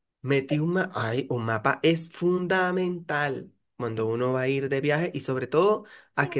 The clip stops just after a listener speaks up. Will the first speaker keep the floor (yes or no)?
yes